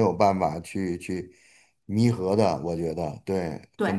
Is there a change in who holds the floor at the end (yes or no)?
no